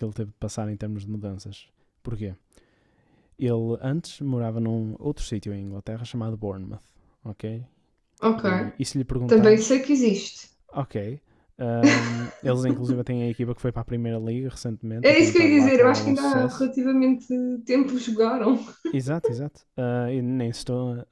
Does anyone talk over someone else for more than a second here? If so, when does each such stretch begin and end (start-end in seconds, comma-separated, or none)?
15.0-16.7